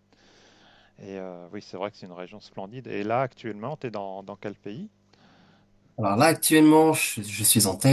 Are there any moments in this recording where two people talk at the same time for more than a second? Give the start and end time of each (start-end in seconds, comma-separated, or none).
none